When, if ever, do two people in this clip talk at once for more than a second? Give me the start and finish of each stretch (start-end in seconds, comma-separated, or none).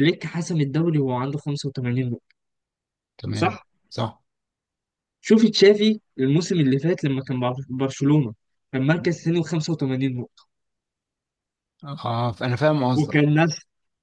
none